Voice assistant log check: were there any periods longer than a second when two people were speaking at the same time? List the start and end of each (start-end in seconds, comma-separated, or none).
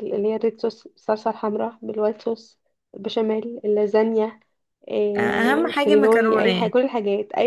5.2-6.7